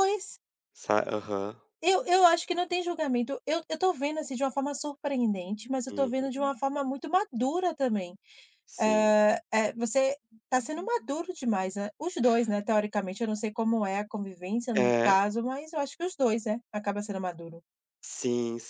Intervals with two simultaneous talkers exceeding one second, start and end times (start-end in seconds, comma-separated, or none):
none